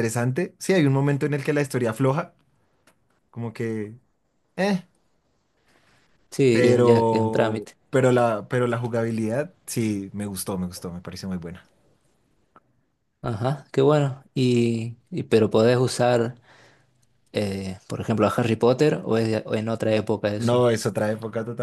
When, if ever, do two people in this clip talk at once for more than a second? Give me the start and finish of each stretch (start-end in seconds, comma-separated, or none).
6.5-7.8